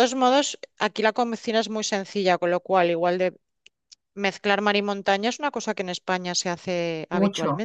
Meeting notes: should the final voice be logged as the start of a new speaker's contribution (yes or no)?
yes